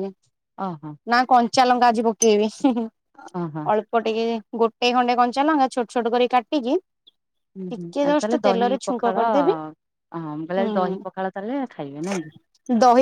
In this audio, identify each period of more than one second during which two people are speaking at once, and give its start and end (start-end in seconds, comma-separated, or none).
7.7-9.5